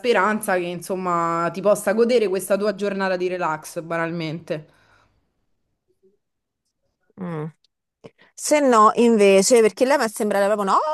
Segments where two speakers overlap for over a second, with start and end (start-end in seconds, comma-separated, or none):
none